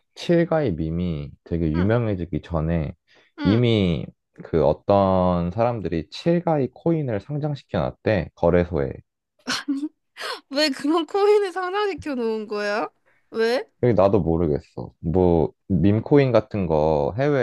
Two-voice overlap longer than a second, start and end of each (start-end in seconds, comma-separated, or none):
none